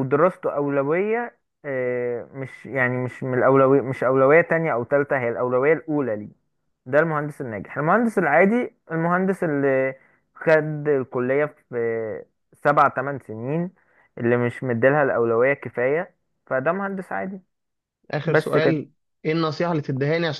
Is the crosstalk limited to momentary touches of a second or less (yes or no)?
yes